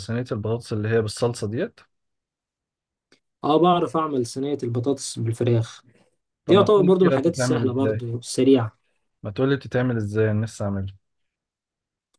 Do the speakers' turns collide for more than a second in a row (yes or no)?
yes